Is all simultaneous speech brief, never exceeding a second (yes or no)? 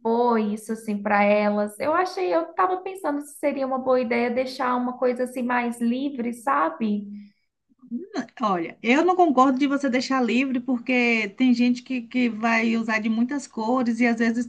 yes